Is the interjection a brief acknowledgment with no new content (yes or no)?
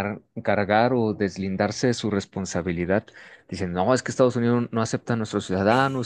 yes